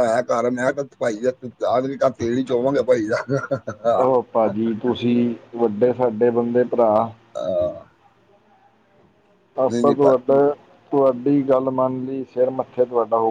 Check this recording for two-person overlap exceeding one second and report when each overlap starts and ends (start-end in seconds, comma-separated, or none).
none